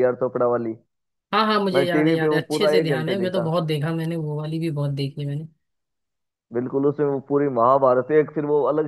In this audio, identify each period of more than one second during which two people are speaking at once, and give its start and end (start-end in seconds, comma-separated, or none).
1.7-3.5